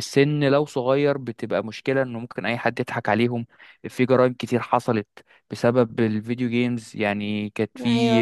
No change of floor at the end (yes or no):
yes